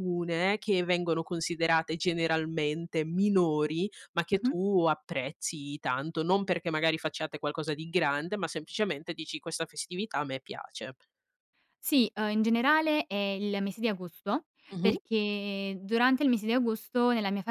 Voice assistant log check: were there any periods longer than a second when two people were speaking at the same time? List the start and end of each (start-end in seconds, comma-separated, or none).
none